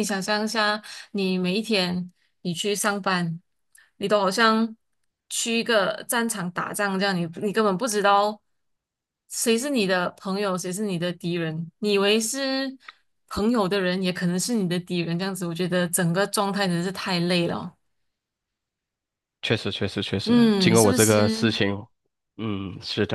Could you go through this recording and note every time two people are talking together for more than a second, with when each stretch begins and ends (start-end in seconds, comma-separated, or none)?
20.2-21.6